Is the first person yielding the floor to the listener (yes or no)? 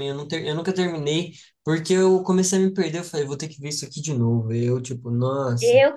yes